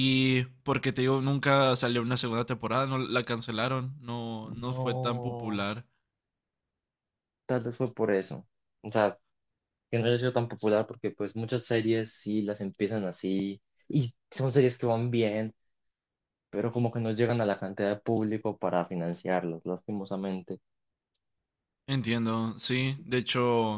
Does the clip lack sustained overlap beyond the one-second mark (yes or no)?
no